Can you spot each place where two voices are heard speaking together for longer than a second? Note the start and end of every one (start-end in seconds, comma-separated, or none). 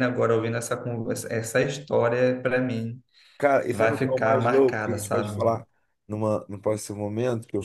3.7-5.4